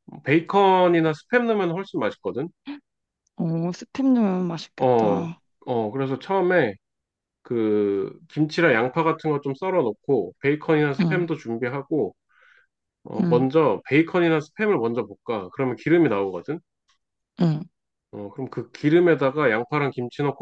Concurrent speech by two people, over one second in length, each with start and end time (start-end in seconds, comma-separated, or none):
none